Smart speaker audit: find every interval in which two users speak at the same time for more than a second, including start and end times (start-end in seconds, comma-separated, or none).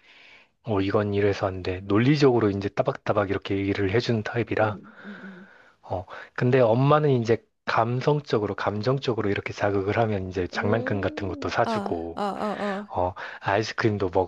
10.6-12.2